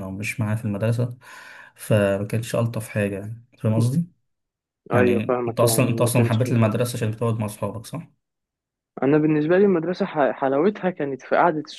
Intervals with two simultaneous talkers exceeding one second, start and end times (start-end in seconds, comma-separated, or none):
4.9-6.4